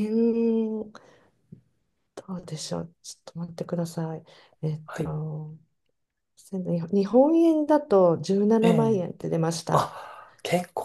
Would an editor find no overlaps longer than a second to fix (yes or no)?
yes